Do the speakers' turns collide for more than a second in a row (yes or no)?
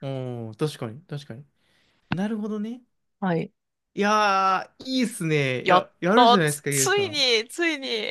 yes